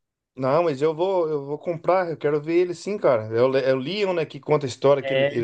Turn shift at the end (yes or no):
no